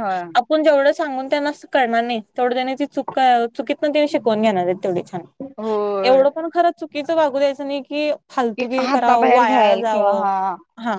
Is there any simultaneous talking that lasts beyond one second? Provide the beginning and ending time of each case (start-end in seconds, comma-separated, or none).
8.6-10.3